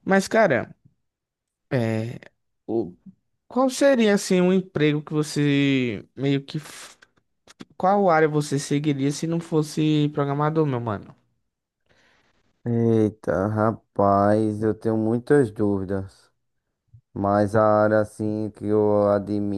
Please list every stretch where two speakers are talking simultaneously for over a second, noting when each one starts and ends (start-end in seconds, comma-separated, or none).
none